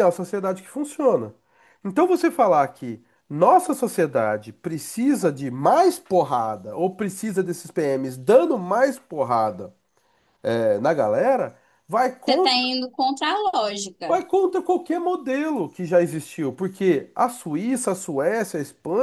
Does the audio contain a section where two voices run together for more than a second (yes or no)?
no